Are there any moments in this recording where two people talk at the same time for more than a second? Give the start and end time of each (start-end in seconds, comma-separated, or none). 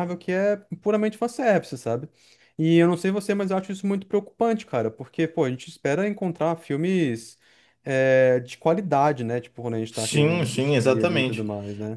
9.9-11.4